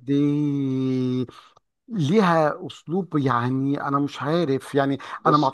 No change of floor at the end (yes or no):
yes